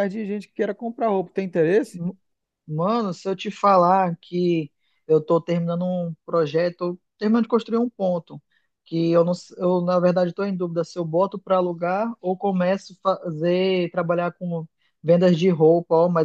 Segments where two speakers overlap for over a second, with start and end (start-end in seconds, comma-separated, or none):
none